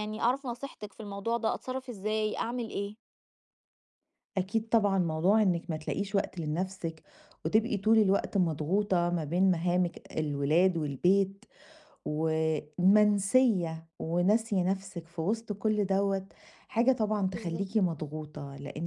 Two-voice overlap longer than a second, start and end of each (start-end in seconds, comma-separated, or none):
none